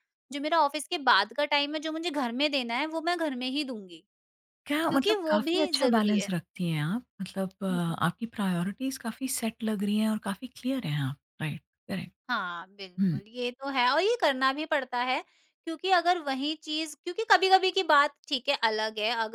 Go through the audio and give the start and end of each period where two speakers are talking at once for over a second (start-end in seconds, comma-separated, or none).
4.9-6.3